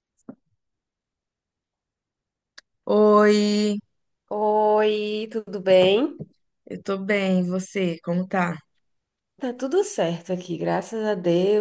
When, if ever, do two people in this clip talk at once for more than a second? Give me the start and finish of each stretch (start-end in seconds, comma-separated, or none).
none